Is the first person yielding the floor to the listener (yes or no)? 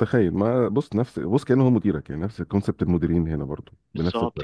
yes